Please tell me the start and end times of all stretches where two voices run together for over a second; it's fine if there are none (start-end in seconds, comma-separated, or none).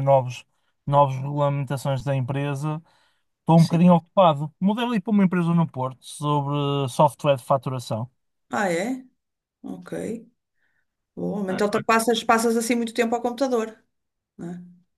none